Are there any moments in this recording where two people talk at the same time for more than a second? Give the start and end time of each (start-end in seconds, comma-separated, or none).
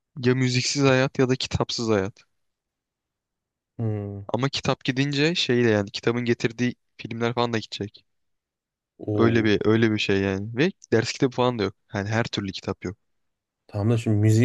none